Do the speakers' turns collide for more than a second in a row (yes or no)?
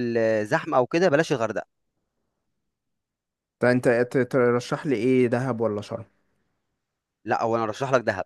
no